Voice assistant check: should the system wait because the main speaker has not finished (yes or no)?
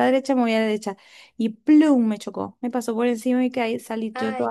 yes